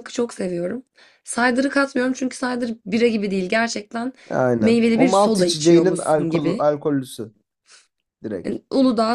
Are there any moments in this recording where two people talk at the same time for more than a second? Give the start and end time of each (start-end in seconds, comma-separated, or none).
4.6-6.6